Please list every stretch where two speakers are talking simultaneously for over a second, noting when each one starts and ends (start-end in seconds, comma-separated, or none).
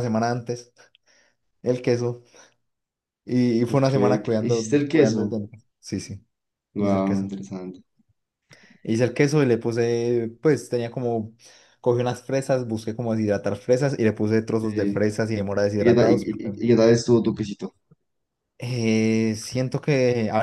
3.7-5.3